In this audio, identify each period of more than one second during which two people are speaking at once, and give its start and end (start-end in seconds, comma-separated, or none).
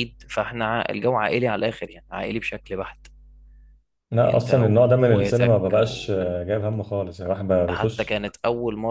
4.2-5.8